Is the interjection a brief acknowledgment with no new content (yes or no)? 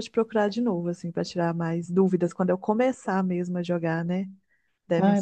no